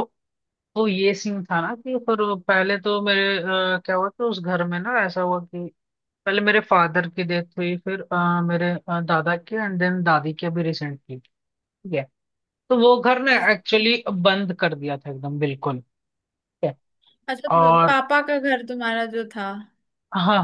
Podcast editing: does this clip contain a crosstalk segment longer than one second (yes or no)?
no